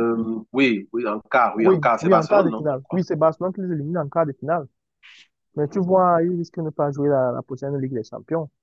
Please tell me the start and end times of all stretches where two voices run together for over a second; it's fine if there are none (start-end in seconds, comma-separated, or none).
1.5-3.3